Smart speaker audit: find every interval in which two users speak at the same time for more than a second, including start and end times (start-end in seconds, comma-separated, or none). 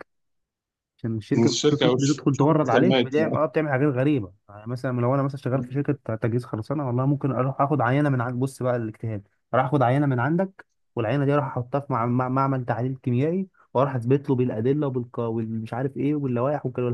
1.4-3.1